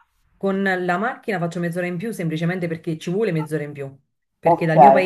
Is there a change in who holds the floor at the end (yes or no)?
no